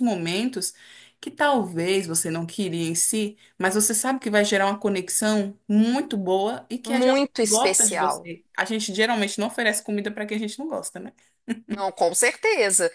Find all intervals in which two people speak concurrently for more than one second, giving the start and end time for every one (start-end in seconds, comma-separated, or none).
6.8-8.3